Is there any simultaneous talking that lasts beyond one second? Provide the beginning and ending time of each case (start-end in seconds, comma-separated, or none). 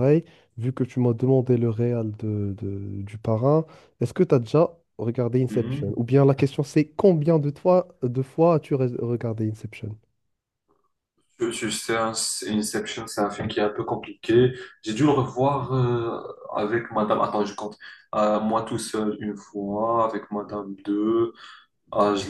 none